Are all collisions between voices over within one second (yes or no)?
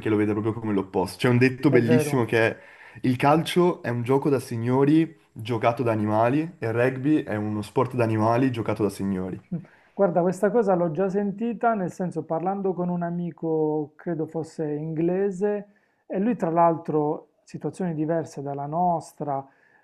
yes